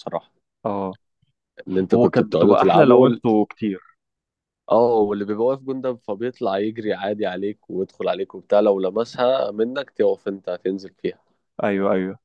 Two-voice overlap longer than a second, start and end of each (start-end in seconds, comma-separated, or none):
1.9-3.2